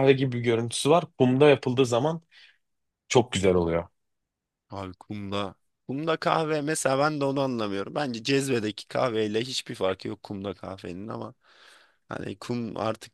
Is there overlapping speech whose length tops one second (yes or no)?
no